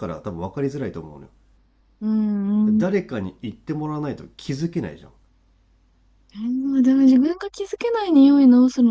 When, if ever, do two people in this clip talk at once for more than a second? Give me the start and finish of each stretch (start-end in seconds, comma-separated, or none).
none